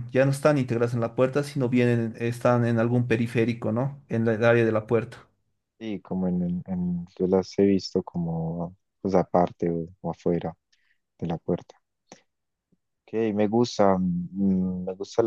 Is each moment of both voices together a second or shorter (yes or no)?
yes